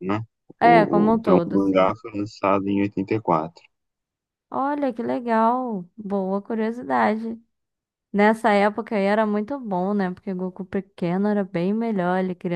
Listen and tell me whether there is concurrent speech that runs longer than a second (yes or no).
yes